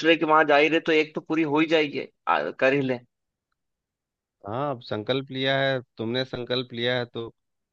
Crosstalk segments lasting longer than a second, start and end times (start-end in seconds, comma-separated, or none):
none